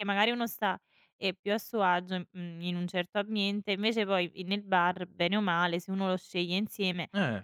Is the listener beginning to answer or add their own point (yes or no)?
yes